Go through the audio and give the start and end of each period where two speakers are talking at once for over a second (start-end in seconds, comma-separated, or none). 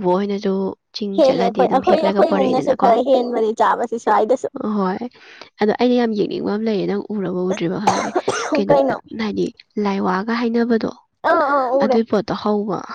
1.2-2.9